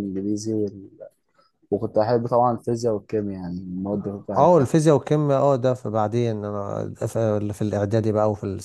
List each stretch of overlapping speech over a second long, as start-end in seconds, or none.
none